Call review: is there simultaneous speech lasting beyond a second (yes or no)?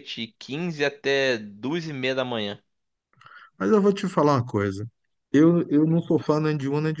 no